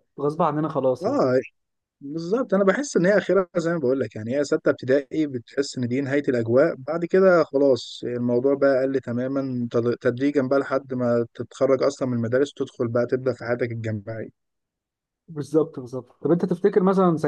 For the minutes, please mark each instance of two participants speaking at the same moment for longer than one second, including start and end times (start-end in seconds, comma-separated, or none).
none